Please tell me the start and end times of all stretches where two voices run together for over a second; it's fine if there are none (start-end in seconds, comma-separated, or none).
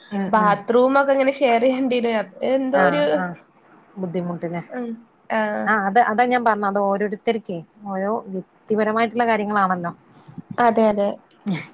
none